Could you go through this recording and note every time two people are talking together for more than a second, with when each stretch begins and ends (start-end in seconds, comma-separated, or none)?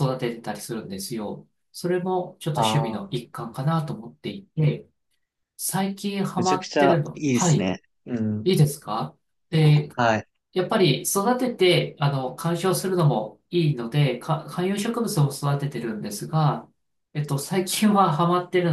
6.4-7.7